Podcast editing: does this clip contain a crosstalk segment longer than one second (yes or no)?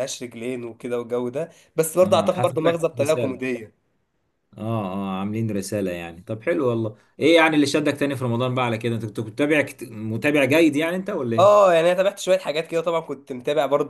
yes